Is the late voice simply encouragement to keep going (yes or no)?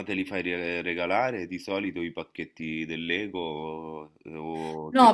no